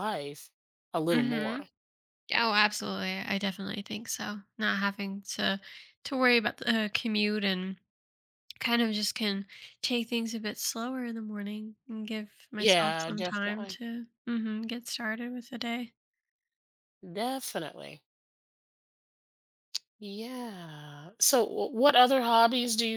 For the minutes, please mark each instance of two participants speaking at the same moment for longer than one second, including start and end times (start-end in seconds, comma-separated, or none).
12.6-13.8